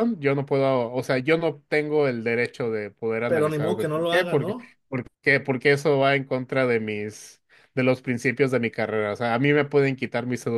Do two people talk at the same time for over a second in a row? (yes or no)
yes